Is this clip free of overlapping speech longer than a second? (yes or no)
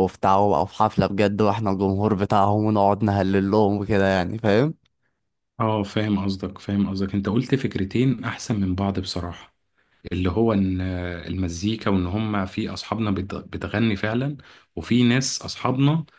yes